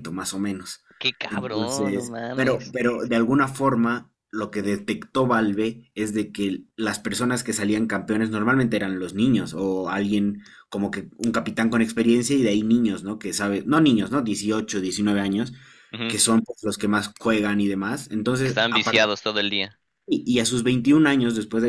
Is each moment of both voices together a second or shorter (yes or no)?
no